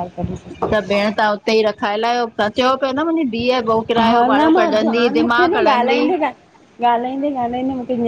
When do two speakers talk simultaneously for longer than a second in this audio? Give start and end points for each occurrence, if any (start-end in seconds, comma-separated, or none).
4.0-6.0